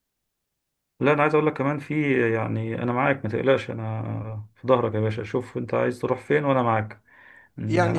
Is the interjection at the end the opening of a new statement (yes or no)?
no